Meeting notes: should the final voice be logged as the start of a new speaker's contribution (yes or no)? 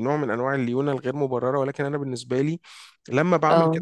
no